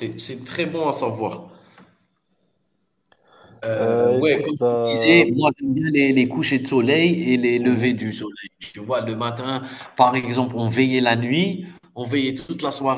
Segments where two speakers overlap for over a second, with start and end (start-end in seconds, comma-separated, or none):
3.7-5.3